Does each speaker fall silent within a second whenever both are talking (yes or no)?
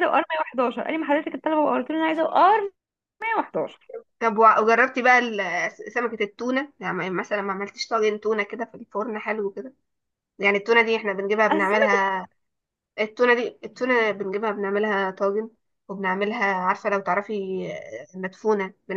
yes